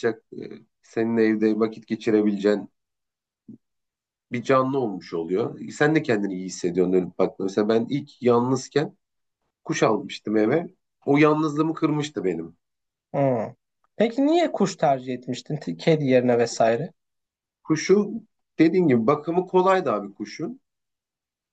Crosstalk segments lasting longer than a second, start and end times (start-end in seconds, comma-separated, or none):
none